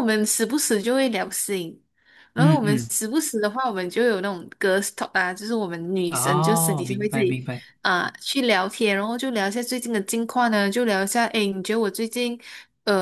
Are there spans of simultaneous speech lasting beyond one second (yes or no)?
yes